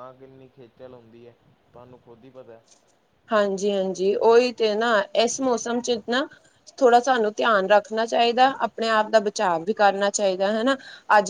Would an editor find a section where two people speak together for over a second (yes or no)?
no